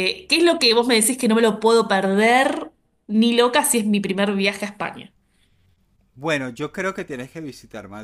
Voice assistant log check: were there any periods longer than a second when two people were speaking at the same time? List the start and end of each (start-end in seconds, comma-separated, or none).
none